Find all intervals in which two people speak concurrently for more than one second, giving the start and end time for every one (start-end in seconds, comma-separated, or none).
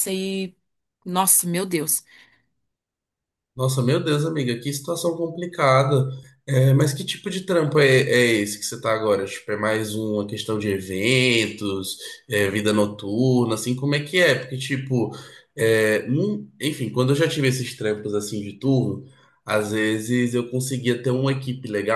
none